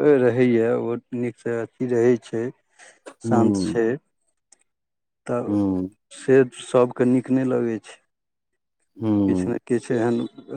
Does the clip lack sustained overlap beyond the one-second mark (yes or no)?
yes